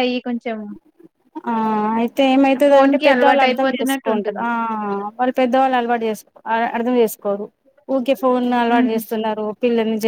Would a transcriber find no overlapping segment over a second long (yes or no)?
no